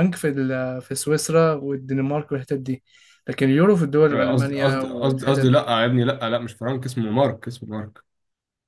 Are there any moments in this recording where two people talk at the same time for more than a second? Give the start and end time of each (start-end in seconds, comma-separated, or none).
4.1-5.6